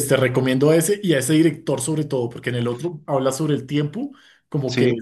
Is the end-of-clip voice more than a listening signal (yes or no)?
no